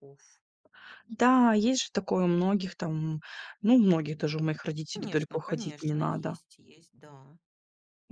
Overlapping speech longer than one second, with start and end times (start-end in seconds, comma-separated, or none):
4.9-6.4